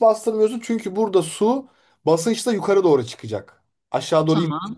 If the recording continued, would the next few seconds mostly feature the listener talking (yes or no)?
no